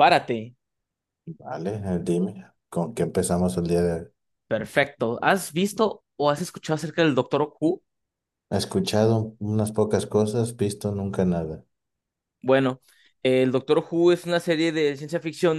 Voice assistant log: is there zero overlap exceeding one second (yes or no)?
yes